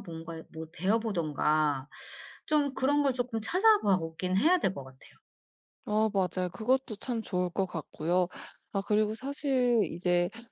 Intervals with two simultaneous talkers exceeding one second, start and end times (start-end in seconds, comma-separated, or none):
none